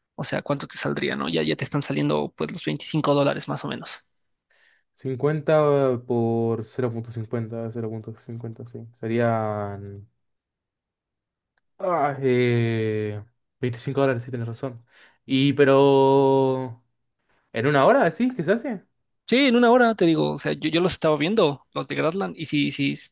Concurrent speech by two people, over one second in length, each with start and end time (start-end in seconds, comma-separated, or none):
none